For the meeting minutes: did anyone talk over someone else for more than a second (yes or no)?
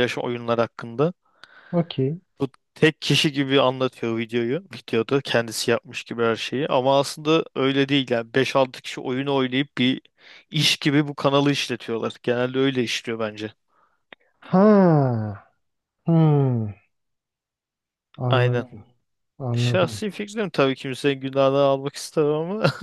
no